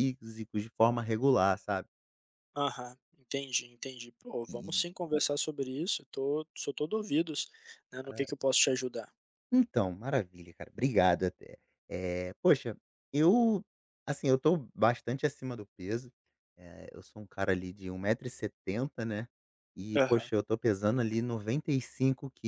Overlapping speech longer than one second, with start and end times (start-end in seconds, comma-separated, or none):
none